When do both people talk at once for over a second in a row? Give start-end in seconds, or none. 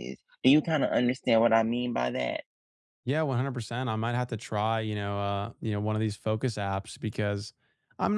none